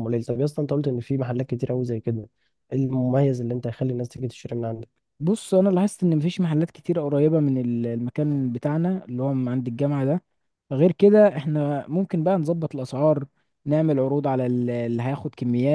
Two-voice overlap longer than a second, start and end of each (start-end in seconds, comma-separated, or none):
none